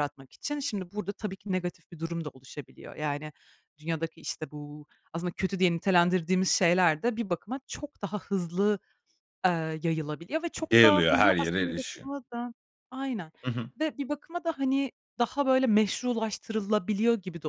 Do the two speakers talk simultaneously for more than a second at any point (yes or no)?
yes